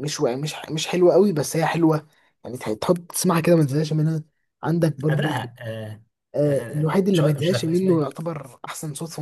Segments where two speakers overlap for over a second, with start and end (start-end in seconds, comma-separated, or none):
6.5-8.1